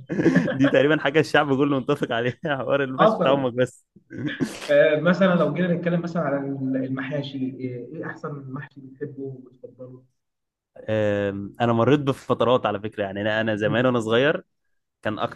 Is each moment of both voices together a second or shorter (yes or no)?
yes